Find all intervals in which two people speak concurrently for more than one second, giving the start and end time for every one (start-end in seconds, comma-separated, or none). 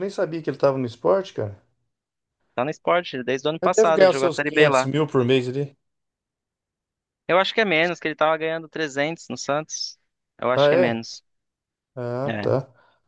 3.6-4.9